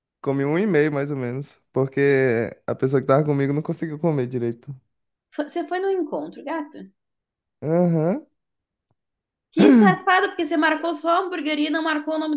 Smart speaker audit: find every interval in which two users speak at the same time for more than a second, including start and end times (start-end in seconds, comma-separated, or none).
none